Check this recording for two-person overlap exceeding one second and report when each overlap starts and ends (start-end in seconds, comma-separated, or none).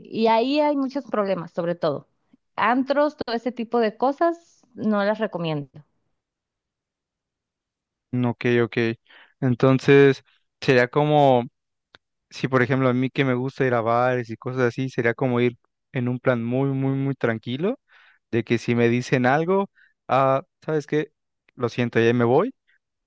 none